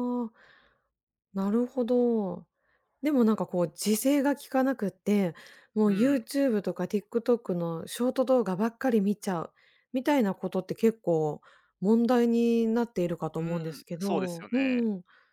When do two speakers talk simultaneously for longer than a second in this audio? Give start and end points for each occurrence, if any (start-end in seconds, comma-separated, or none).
13.3-14.8